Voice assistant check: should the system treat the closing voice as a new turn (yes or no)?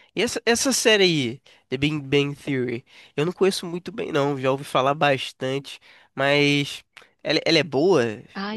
yes